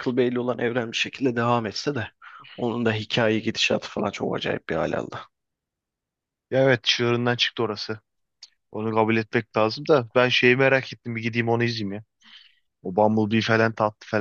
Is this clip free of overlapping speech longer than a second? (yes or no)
yes